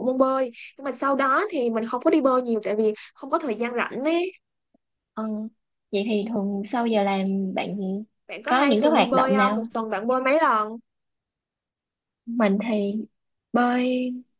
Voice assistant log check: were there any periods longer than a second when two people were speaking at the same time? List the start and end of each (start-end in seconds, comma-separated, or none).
8.4-9.7